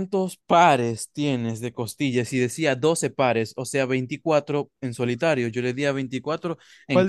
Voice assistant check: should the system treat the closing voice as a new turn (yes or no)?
yes